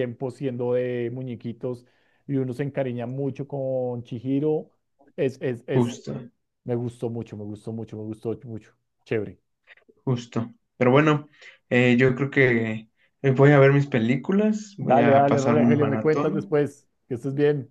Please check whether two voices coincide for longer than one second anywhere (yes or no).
yes